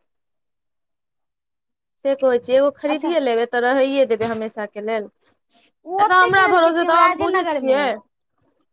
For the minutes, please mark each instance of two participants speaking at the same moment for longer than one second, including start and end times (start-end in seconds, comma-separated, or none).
5.9-7.8